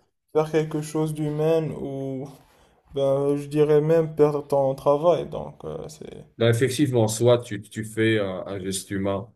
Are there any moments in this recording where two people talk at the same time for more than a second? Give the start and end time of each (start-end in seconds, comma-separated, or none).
none